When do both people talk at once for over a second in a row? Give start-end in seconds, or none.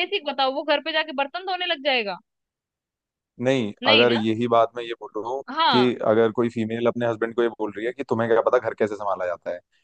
none